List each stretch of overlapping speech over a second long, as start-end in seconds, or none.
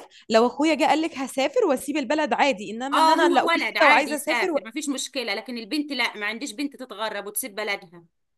2.9-4.6